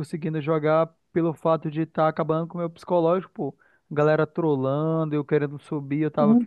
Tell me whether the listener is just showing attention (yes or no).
no